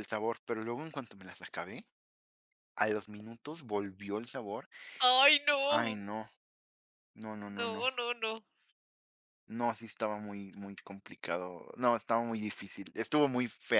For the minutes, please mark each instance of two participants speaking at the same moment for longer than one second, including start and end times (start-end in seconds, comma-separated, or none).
none